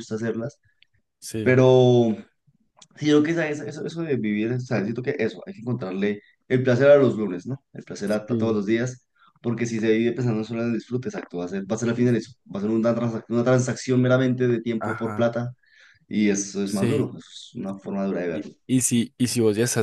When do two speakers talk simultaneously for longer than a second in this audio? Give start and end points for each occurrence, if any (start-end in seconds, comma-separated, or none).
none